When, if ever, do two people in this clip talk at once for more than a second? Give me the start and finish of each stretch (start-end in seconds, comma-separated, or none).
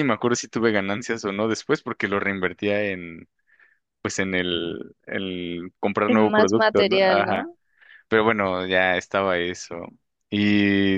6.0-7.5